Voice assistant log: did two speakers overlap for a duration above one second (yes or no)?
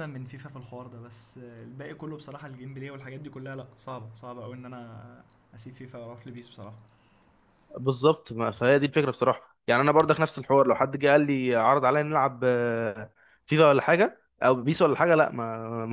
no